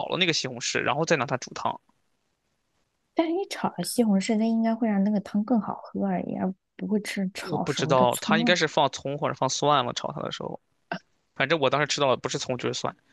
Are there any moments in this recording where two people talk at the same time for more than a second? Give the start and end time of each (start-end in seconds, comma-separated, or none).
7.4-8.6